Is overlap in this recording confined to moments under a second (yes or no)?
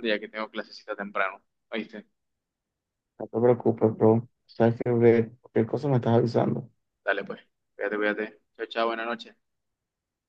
yes